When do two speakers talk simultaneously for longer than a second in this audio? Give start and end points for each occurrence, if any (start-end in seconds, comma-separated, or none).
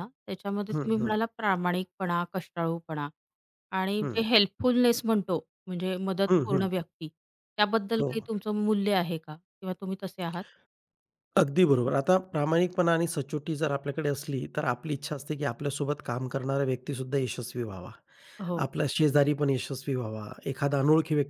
none